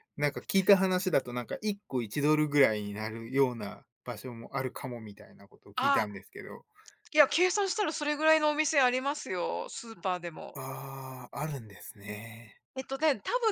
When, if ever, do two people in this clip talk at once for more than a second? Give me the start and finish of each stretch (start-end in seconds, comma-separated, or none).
none